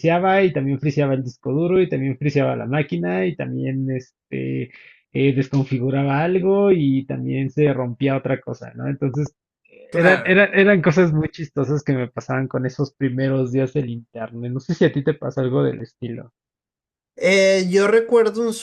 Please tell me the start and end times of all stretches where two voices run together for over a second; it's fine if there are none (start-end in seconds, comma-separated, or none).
none